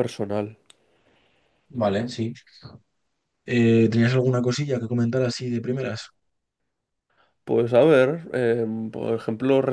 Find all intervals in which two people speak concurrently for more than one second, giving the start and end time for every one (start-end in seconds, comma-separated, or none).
none